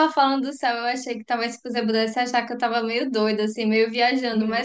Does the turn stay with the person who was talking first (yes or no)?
yes